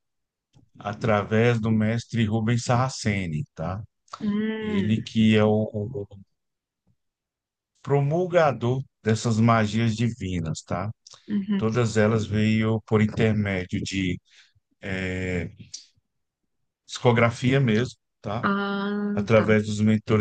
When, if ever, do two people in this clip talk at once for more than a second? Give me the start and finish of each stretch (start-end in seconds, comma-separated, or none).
none